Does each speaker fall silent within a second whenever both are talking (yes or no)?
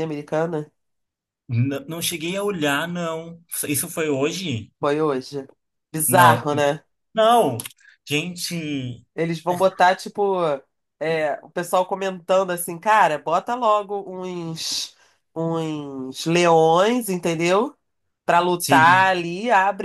yes